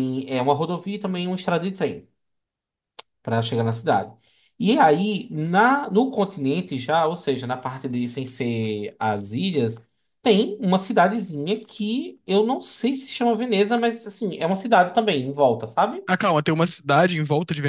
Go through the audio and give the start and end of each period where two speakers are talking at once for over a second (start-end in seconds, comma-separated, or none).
none